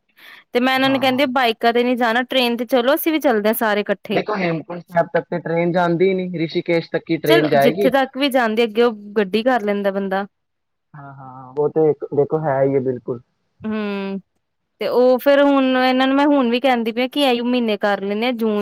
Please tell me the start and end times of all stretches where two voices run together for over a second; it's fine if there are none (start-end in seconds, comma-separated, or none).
none